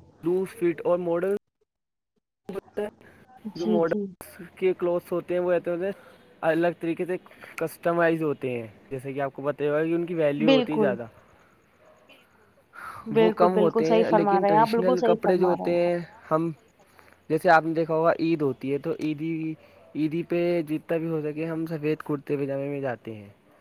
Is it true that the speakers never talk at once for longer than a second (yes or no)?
no